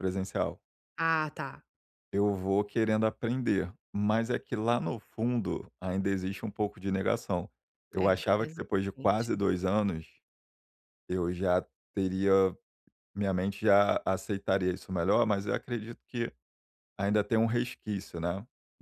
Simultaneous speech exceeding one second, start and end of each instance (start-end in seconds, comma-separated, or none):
8.0-9.3